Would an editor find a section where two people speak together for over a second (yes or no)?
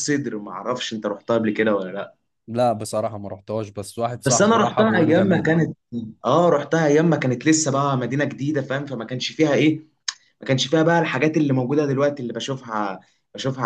yes